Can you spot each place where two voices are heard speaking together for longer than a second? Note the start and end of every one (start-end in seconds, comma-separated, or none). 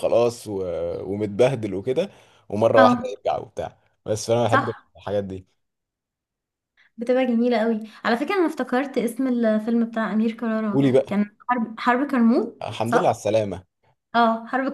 none